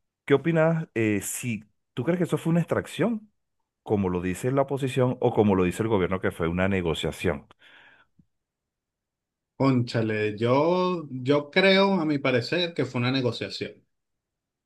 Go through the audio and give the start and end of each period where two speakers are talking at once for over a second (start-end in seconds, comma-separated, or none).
none